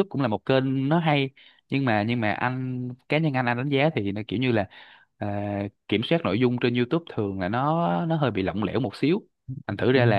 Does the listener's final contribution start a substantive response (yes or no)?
no